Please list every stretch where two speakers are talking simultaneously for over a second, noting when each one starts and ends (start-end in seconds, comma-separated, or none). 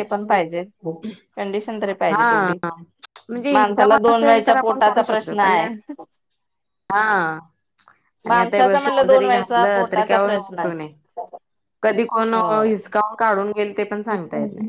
3.5-5.6, 8.3-10.7